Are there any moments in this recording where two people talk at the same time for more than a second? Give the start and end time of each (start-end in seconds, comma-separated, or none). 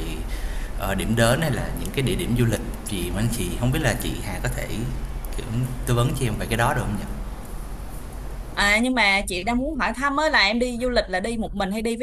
none